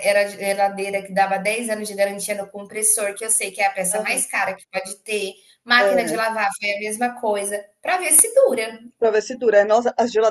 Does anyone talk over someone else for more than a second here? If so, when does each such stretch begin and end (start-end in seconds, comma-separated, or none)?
none